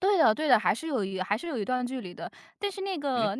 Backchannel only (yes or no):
yes